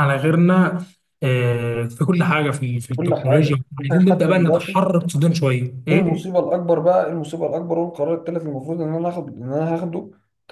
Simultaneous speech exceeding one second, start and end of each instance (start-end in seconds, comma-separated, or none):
3.0-4.8